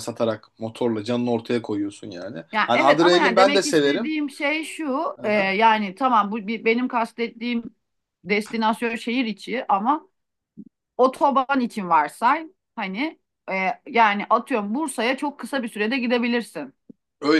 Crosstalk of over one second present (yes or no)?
yes